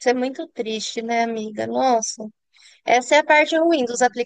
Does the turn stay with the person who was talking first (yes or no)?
yes